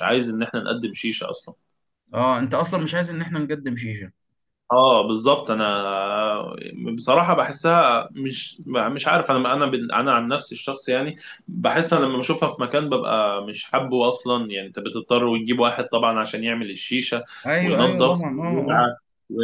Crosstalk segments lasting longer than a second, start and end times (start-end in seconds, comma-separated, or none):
17.6-18.9